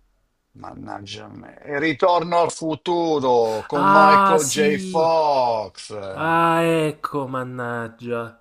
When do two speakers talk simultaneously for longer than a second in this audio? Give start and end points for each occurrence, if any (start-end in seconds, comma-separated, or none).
3.7-5.1